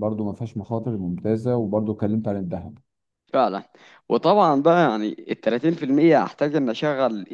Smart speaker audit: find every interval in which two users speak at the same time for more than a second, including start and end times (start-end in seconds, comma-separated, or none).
none